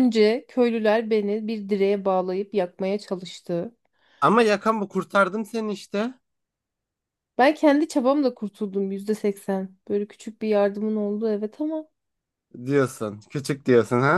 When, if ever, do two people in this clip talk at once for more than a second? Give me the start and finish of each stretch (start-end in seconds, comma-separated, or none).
none